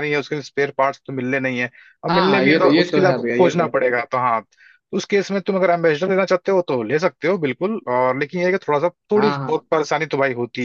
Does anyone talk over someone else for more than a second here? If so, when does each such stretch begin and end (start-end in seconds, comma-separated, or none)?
2.1-3.9